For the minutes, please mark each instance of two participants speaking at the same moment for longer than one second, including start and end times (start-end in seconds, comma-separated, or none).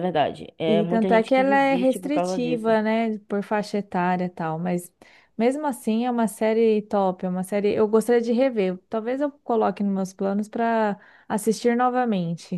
0.7-2.8